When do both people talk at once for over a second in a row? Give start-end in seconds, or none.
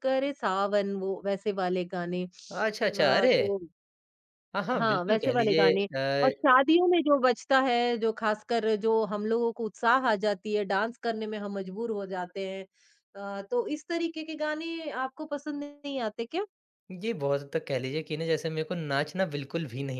4.8-6.5